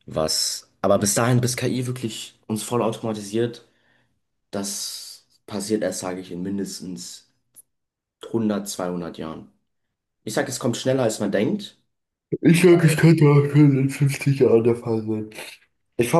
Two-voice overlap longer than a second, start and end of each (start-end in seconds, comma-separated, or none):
none